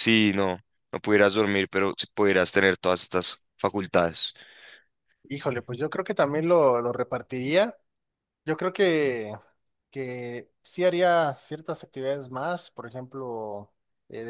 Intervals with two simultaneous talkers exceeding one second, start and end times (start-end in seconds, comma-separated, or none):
none